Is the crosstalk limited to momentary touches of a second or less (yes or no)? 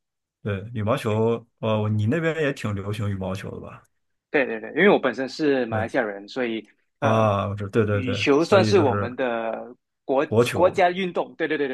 no